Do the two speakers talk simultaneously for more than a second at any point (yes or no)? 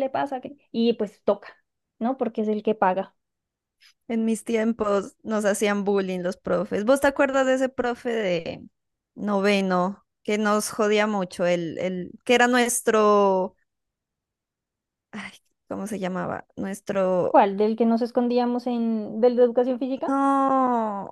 no